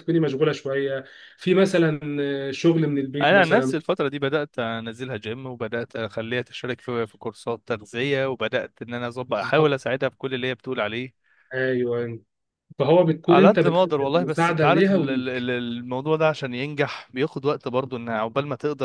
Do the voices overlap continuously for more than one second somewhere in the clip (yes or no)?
yes